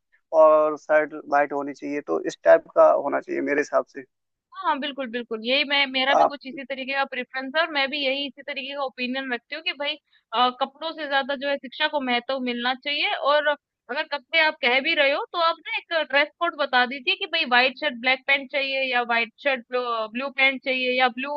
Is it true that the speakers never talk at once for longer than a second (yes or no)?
yes